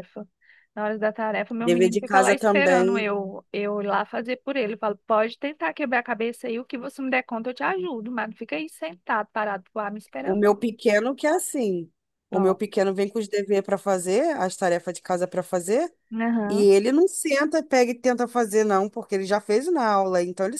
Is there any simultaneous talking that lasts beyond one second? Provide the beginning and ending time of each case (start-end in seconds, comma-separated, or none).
1.6-3.1